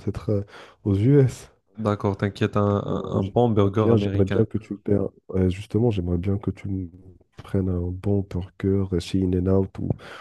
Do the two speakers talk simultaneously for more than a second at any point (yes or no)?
yes